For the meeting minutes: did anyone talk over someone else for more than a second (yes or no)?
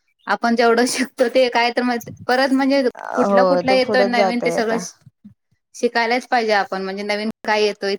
yes